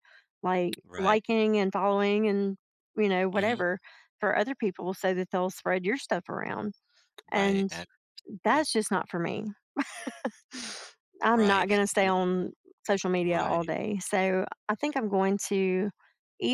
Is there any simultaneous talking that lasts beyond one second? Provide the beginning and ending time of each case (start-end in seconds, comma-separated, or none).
none